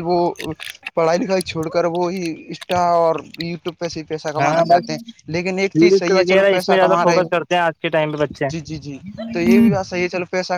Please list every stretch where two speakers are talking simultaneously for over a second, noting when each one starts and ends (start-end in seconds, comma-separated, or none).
5.7-7.3